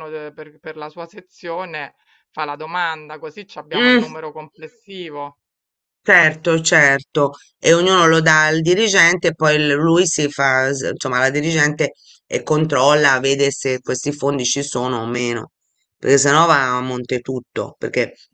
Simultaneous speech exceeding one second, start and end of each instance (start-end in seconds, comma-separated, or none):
none